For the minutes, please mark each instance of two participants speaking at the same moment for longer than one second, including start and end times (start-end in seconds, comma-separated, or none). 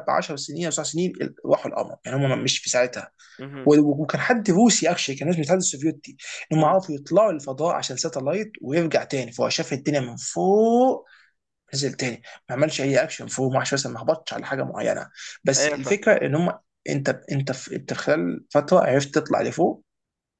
none